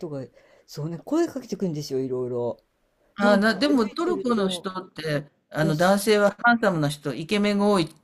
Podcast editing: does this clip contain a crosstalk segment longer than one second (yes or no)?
yes